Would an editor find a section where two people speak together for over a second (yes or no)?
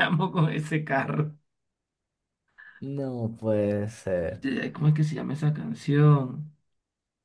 no